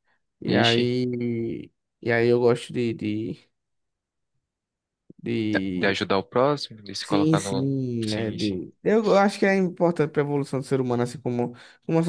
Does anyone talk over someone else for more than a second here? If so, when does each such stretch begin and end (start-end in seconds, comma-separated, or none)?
7.0-8.6